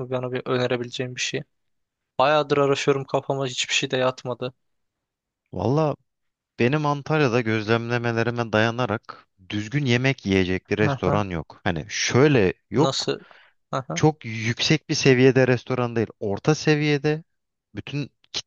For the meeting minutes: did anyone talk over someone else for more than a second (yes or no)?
no